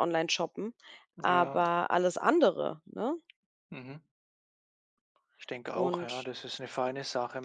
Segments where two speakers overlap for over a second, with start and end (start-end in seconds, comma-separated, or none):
none